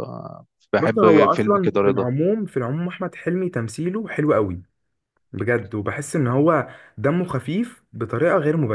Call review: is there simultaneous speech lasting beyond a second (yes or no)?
yes